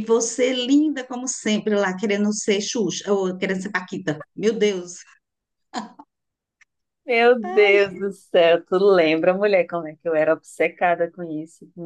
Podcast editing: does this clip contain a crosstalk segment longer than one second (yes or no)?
no